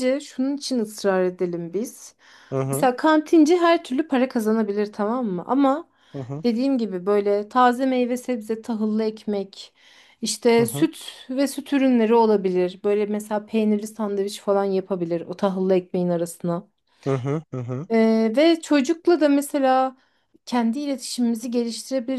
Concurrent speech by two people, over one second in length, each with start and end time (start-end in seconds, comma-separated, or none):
none